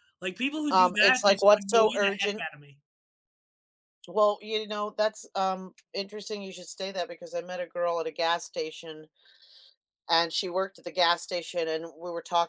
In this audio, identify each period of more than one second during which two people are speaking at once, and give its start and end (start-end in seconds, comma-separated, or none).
0.7-2.5